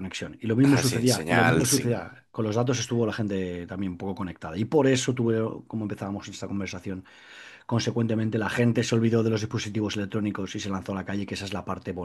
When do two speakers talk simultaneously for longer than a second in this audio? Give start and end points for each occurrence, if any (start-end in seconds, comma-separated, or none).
0.6-2.1